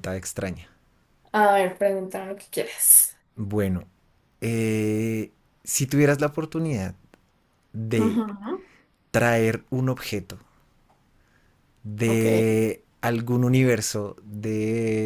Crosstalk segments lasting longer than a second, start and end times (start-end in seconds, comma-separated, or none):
none